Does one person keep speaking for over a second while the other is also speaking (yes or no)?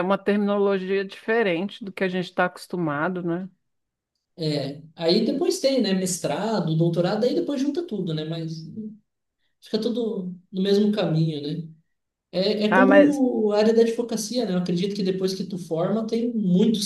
no